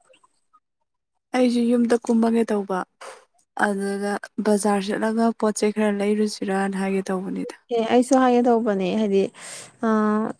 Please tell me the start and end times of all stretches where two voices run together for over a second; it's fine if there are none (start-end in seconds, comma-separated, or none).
none